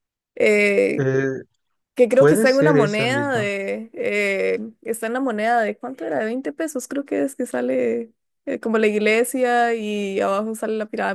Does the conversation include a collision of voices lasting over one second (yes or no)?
yes